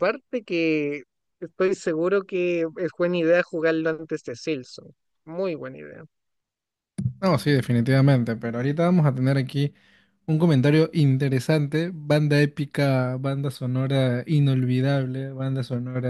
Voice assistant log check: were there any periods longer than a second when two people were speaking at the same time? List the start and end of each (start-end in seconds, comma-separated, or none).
none